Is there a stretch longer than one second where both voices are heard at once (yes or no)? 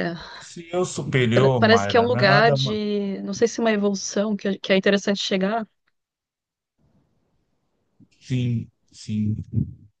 yes